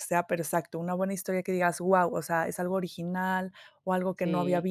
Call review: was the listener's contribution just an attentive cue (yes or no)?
yes